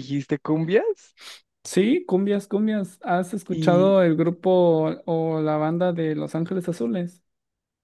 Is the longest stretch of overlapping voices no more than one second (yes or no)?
yes